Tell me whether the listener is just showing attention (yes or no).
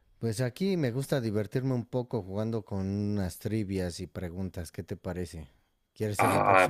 no